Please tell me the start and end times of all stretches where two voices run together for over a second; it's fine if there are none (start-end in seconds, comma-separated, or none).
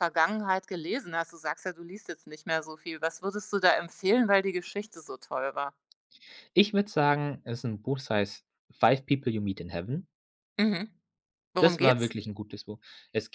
none